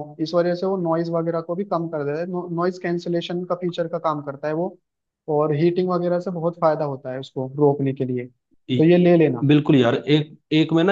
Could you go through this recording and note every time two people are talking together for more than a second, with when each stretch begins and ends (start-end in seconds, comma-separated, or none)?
none